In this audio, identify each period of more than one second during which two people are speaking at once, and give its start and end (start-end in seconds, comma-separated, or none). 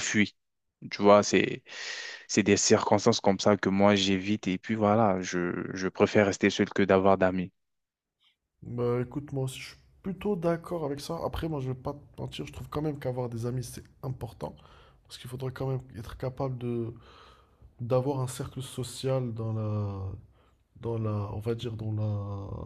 none